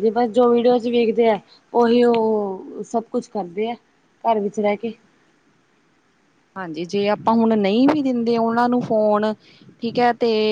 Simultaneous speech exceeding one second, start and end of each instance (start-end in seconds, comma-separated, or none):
none